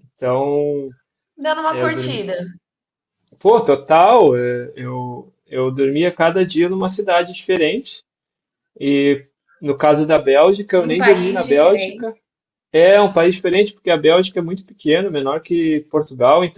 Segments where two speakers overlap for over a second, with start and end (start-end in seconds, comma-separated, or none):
10.7-12.1